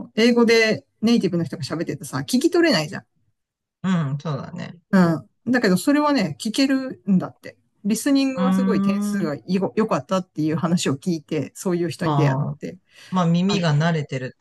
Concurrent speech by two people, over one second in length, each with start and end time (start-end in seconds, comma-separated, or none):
none